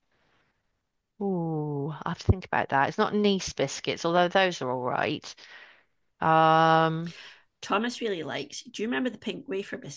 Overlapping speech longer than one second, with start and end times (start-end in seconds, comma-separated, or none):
none